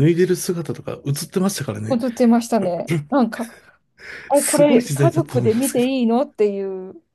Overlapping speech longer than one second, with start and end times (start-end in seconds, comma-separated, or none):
4.3-5.9